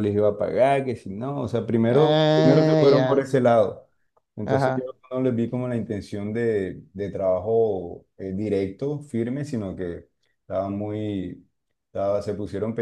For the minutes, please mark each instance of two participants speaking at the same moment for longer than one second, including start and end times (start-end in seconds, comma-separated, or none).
1.9-3.3